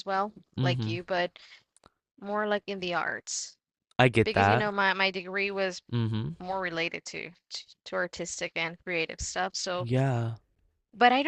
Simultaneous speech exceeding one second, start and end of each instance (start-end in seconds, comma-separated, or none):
none